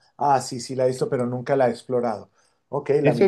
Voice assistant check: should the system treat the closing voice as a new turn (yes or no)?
yes